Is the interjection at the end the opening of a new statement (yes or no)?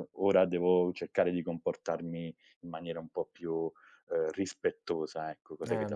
yes